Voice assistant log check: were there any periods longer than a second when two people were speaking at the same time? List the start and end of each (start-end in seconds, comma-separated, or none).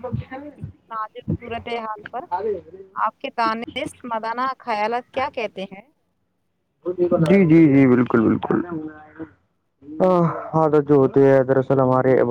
none